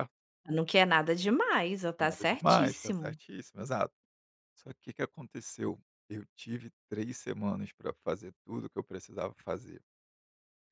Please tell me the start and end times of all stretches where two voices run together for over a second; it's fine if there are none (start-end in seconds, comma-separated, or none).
2.0-3.2